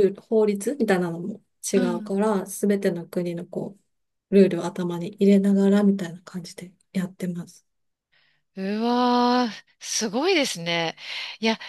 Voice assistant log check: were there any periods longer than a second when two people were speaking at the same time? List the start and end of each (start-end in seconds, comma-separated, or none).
none